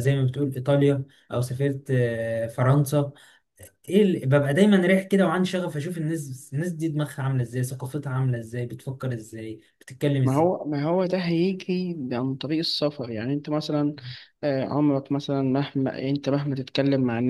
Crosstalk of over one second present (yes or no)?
no